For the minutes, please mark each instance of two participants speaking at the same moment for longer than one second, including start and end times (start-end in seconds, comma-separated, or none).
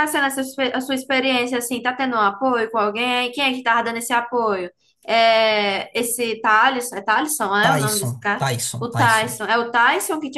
7.6-9.4